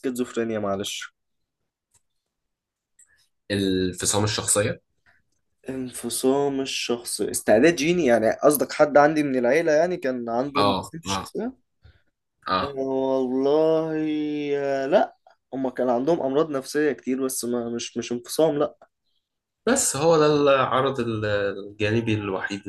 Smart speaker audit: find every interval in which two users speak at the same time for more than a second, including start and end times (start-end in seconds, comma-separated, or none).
none